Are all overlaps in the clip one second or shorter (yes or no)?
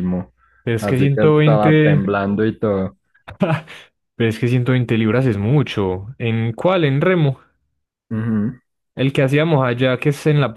no